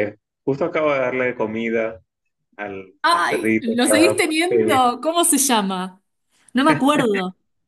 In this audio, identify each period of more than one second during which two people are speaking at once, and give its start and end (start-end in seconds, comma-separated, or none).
3.0-4.8